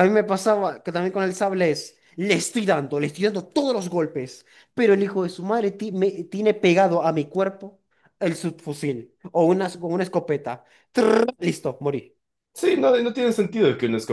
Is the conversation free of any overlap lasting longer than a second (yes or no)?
yes